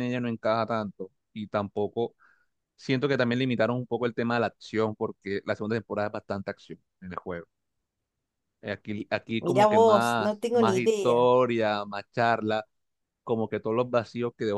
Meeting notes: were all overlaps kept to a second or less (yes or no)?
no